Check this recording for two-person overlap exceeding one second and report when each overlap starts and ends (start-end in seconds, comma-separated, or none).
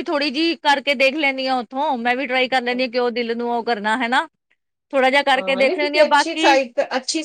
5.3-6.6